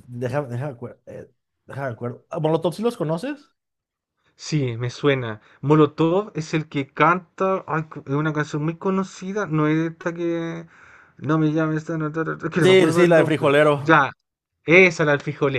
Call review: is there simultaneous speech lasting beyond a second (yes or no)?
yes